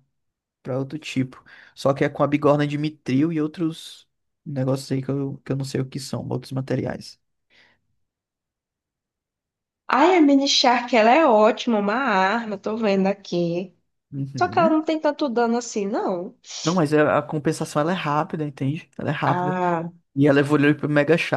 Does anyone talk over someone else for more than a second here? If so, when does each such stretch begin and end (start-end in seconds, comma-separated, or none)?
none